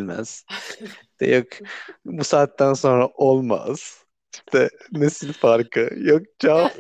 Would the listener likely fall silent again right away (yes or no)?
no